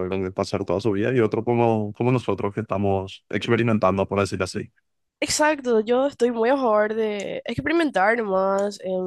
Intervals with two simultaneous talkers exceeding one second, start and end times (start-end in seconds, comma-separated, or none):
none